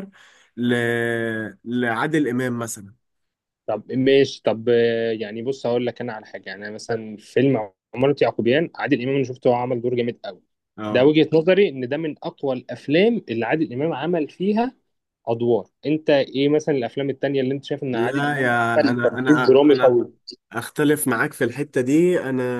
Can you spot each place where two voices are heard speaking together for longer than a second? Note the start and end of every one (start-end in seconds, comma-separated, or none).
17.9-20.0